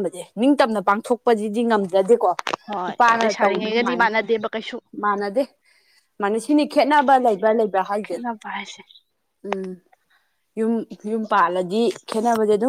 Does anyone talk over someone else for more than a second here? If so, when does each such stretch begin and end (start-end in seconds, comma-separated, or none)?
2.9-4.1